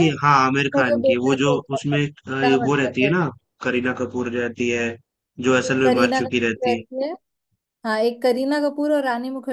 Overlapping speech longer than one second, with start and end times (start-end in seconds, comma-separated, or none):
0.5-3.1, 5.5-6.8